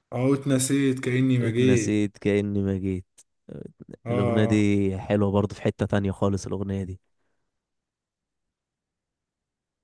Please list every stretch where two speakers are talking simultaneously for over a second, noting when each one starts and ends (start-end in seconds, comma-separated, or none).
none